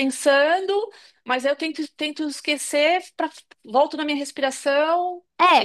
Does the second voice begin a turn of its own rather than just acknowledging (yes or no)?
yes